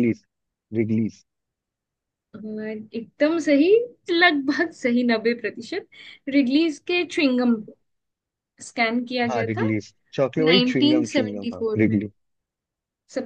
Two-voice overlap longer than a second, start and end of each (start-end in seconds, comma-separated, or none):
10.4-12.0